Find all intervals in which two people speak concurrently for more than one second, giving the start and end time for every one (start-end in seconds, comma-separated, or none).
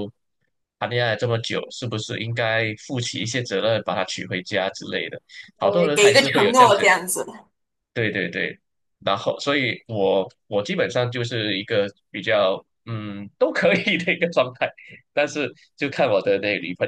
5.6-6.9